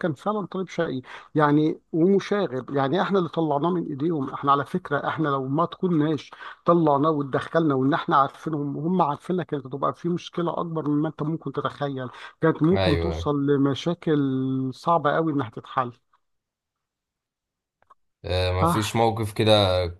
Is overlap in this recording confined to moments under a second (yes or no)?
yes